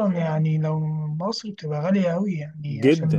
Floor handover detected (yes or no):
yes